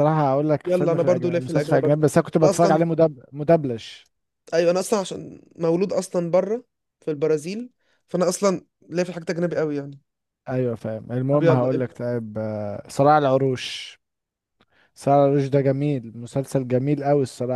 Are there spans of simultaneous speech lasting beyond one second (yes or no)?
yes